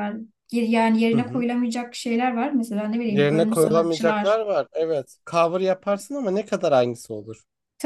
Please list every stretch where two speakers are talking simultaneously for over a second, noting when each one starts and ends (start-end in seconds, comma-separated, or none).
3.1-4.4